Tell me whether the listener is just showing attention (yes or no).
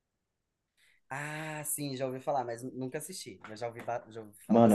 no